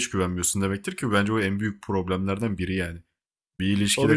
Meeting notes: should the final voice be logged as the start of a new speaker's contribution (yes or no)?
no